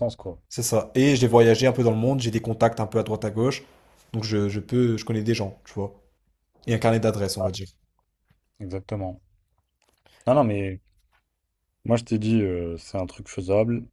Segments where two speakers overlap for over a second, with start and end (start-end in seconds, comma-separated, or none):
none